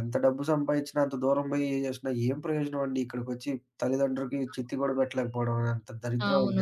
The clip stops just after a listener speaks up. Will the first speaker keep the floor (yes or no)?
no